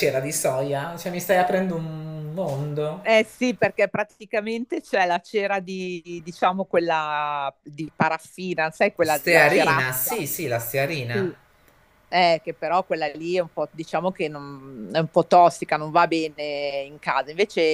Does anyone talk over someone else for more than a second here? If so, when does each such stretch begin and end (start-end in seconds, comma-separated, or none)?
9.0-10.2